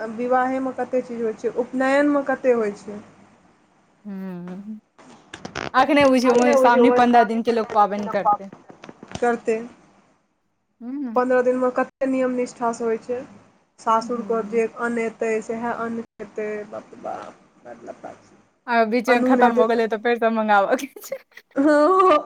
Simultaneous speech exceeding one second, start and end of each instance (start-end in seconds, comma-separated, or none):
6.3-8.5